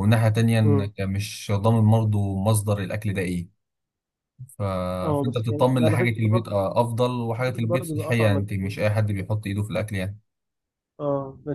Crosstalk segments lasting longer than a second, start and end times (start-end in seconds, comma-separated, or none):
5.2-6.7, 7.4-8.8